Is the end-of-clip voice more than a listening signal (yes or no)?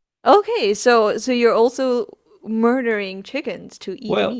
yes